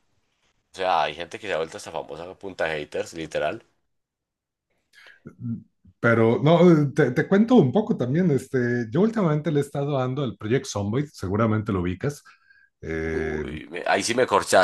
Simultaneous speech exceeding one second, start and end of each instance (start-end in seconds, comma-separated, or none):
none